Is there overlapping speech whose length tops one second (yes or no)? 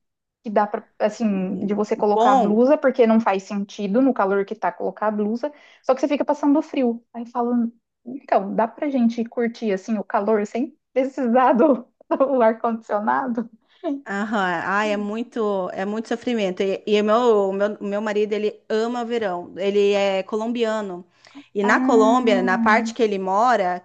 yes